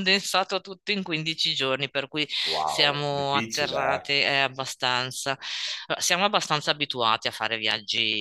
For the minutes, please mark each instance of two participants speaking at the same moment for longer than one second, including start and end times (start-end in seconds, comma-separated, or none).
2.6-4.1